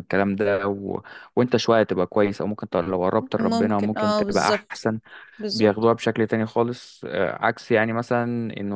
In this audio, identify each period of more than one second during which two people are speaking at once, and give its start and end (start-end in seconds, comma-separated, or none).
3.4-4.9